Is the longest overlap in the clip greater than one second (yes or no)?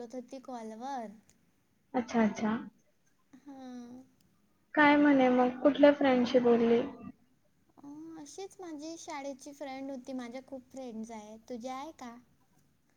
no